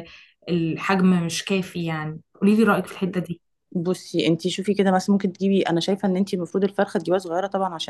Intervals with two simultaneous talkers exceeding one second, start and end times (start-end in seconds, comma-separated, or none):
none